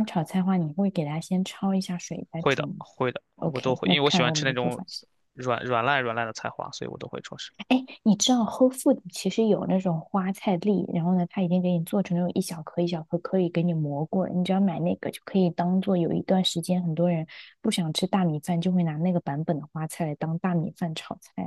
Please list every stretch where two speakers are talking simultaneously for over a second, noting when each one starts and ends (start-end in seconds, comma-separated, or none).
3.4-4.8